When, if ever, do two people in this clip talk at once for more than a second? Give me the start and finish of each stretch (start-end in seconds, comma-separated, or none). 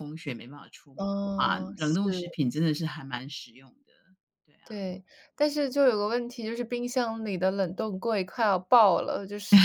0.9-2.4